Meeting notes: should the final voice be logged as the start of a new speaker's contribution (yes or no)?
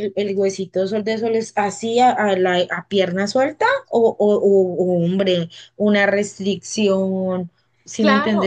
yes